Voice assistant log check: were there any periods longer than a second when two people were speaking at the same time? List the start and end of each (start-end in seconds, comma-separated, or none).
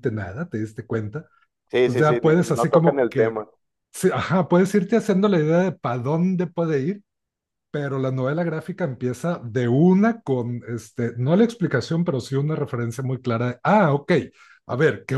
1.8-3.4